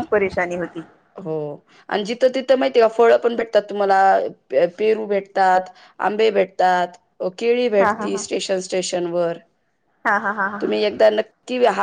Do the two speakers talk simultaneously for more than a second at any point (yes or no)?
no